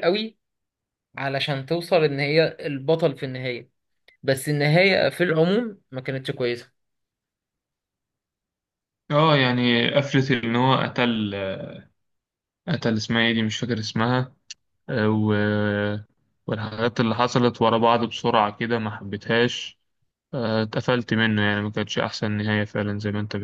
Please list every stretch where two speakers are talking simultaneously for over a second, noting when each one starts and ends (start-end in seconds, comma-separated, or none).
none